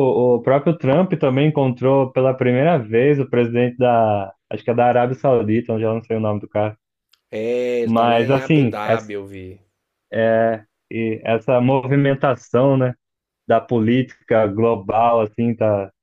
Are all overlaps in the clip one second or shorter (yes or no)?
no